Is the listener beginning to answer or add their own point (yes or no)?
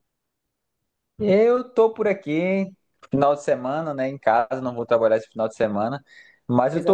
no